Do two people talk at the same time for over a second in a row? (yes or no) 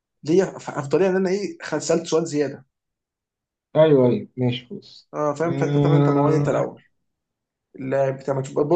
yes